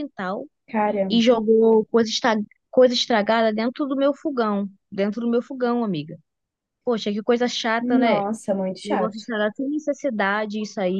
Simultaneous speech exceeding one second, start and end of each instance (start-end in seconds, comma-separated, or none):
none